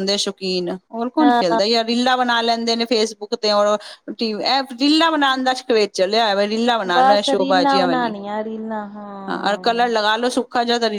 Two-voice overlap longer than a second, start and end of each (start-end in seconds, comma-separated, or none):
6.9-8.2